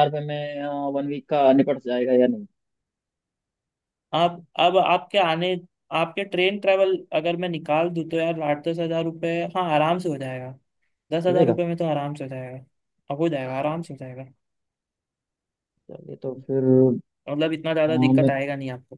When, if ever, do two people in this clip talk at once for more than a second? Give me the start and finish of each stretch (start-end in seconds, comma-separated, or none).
none